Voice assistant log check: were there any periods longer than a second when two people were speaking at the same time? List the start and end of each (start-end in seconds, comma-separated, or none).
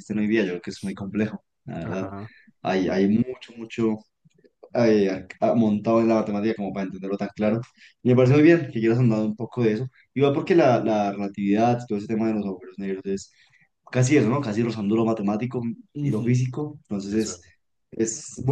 none